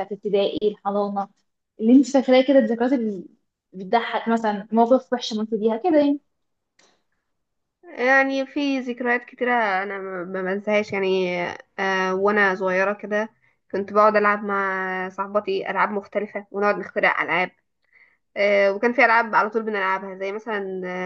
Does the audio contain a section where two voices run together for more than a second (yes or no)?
no